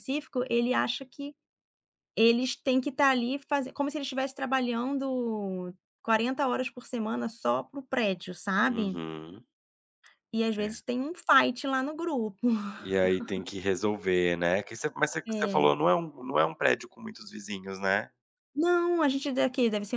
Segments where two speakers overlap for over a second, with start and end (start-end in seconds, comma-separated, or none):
none